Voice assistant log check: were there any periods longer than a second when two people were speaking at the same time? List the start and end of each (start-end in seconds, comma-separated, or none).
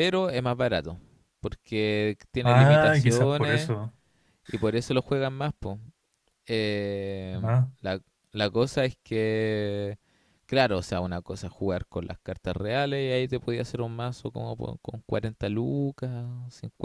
2.4-3.7